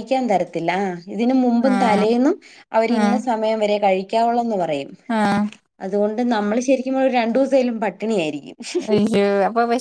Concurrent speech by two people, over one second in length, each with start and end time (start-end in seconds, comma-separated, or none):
none